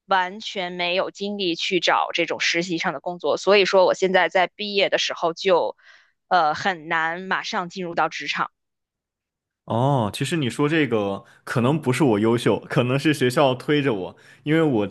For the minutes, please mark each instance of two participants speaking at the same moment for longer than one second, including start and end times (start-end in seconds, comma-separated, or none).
none